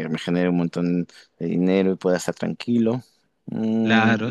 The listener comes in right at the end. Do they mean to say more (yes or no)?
yes